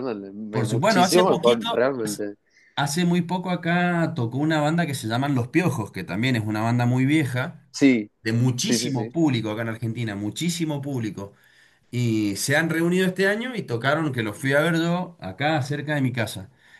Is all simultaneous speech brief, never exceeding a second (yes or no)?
no